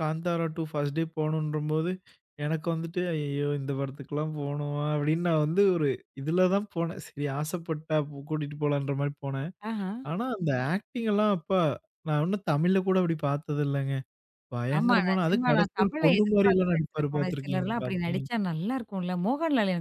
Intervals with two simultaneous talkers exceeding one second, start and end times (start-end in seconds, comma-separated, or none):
14.8-18.2